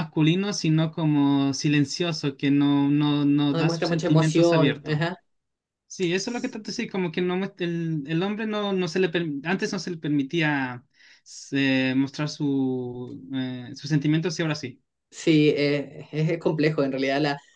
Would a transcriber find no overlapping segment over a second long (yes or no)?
no